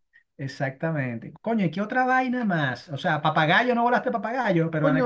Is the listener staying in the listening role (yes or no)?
yes